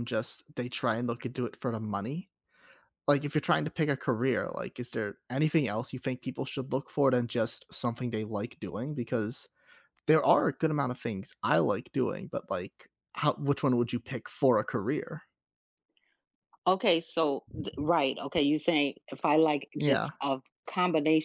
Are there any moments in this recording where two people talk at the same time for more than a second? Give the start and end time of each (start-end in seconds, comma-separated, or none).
none